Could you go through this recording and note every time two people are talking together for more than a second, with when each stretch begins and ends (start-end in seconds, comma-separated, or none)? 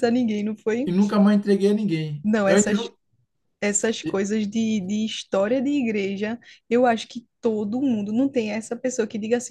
none